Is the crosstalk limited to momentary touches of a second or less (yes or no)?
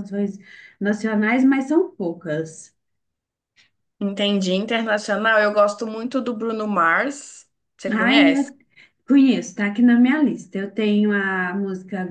yes